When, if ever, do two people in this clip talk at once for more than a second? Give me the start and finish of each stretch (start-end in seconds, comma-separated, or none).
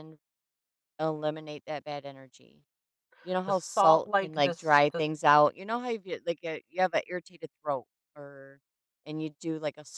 3.5-5.0